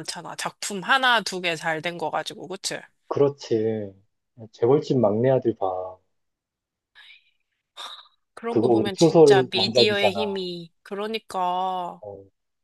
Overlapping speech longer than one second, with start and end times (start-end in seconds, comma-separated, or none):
8.5-10.4